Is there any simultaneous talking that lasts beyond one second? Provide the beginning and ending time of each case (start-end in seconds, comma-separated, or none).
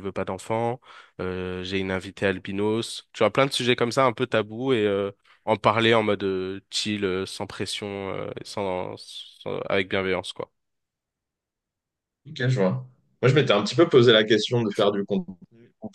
none